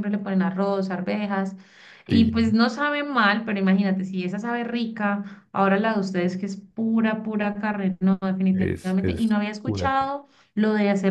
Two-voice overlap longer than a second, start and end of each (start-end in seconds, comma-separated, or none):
8.5-10.1